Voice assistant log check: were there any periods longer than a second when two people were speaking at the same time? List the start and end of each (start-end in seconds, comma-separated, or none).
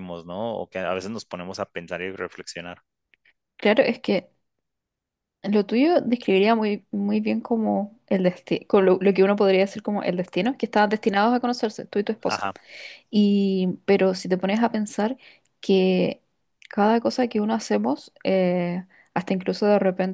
none